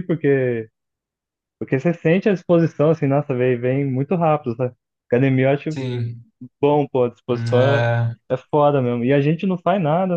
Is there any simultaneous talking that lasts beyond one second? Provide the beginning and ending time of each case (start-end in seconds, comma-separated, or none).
none